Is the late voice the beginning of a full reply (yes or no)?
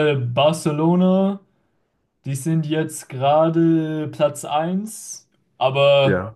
no